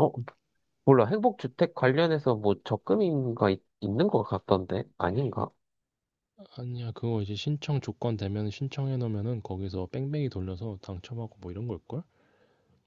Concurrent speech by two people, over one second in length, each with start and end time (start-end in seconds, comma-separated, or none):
none